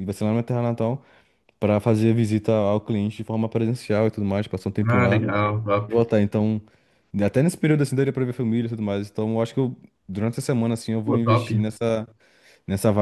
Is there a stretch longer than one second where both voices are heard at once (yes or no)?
no